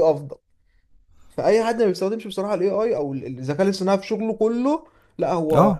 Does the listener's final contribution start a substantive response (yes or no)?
no